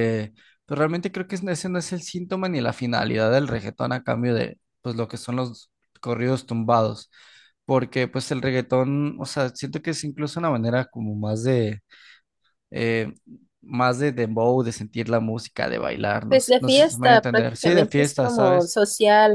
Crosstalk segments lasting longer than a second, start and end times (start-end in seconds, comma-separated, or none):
16.3-18.8